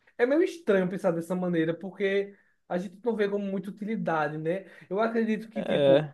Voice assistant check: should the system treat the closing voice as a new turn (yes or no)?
no